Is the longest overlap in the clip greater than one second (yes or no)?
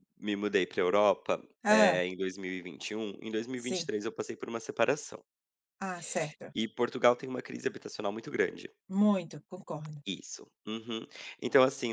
no